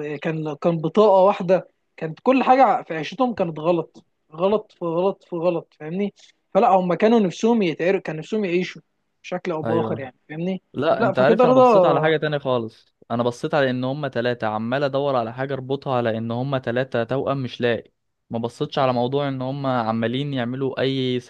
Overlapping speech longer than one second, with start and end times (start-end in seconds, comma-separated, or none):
11.0-12.2